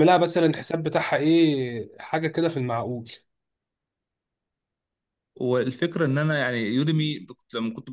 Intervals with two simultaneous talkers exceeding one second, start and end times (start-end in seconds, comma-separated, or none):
none